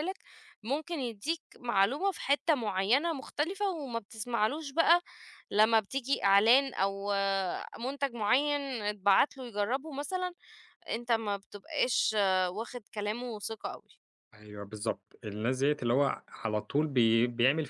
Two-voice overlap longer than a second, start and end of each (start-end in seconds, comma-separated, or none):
none